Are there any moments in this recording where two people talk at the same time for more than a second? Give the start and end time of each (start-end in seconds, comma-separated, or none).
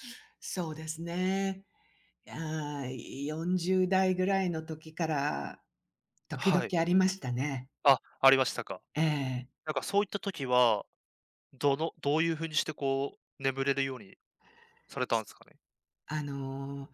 none